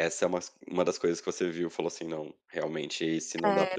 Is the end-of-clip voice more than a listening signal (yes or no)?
yes